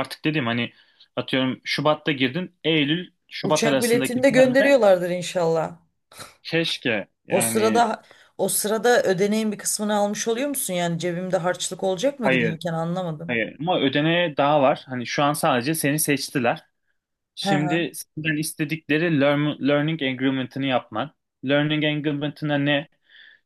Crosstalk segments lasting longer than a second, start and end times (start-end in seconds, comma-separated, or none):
3.4-4.8